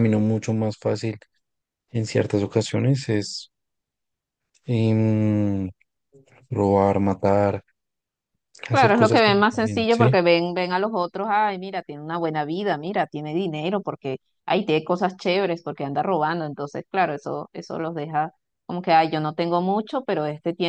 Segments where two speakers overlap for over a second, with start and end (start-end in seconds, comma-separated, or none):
8.7-10.2